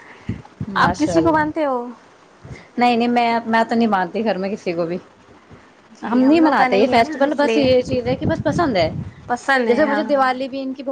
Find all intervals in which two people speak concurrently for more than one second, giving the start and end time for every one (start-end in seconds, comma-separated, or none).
6.1-7.7